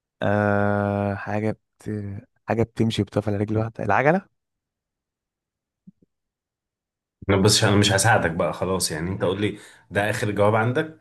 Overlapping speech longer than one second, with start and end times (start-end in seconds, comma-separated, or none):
none